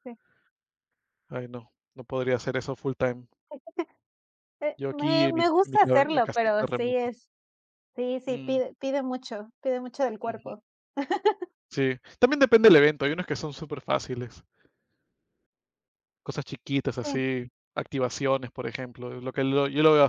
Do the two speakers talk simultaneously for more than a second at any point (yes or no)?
yes